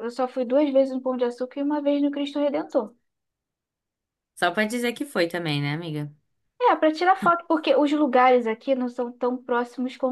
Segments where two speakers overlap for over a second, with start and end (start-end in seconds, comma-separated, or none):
none